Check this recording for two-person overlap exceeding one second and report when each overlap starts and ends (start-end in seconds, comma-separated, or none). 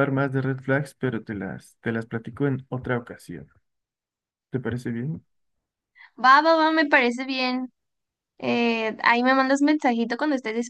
none